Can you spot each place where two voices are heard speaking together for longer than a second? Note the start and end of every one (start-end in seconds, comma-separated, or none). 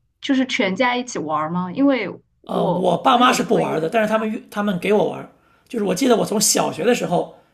2.5-3.8